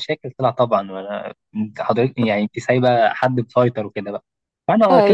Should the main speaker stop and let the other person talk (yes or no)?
no